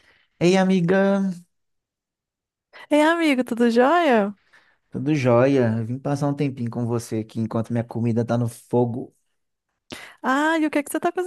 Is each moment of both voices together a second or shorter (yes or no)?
yes